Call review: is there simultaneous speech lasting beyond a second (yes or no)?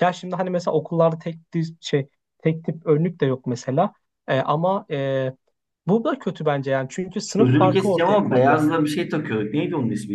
yes